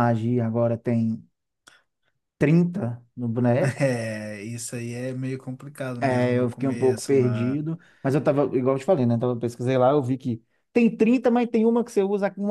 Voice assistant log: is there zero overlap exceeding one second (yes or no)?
no